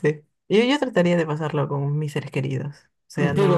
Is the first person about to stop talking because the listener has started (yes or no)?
yes